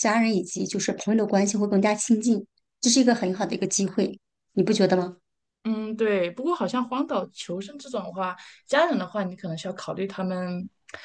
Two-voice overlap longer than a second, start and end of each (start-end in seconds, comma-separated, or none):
none